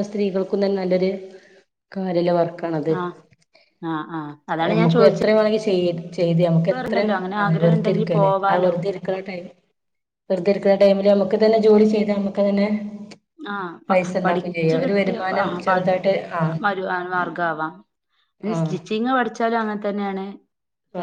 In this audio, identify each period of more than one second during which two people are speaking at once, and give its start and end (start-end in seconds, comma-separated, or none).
6.7-8.7, 13.9-15.7